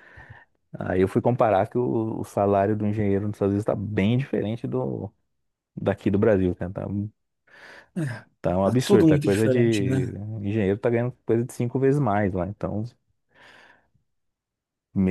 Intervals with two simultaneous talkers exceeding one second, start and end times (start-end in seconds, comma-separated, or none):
8.6-10.2